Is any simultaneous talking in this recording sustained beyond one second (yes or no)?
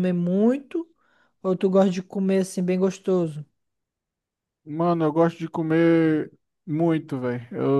no